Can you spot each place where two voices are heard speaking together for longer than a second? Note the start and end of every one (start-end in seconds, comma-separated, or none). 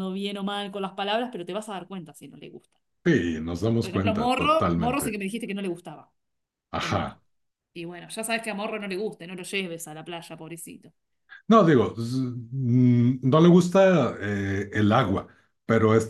3.8-5.2